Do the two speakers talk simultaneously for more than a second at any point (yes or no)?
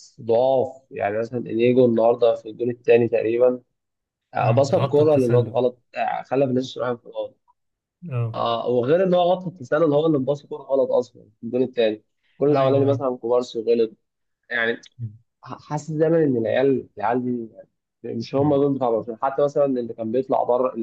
yes